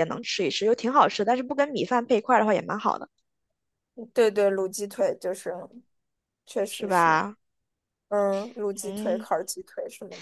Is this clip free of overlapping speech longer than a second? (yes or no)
yes